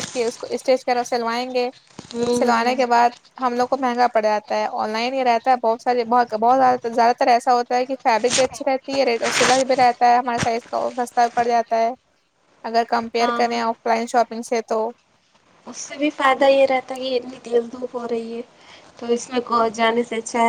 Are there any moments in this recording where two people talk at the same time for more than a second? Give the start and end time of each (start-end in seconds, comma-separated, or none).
none